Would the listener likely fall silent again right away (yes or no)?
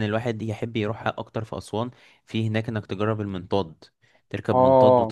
yes